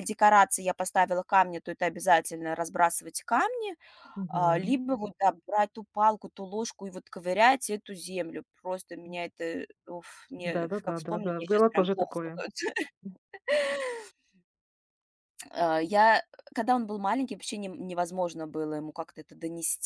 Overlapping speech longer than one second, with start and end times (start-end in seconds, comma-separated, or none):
10.4-12.1